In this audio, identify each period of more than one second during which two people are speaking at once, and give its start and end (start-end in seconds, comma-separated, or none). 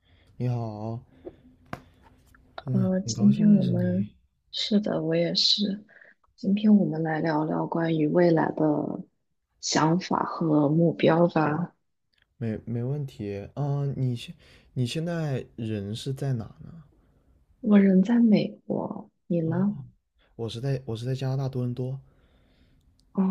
2.6-4.1